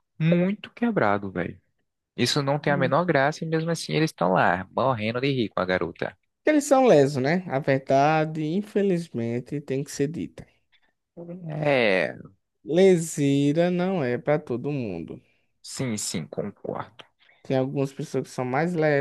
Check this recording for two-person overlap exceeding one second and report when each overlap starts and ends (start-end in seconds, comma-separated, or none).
none